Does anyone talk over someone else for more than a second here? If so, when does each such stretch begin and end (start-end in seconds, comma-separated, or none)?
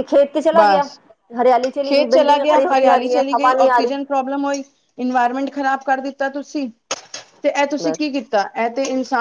1.9-3.9